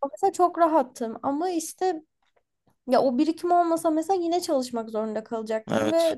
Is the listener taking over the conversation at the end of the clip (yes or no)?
no